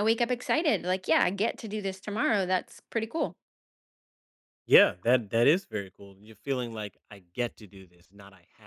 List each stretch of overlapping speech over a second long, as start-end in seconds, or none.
none